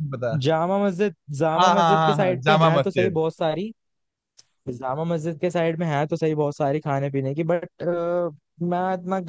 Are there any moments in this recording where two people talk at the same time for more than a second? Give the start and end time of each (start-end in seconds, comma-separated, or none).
1.6-3.2